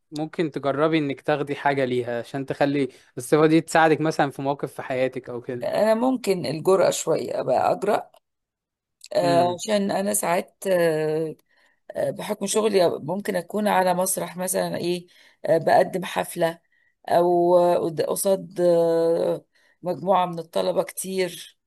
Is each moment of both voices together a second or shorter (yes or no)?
yes